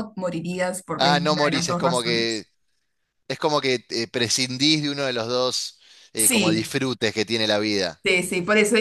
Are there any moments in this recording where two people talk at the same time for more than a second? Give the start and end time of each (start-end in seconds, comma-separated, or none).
1.0-2.4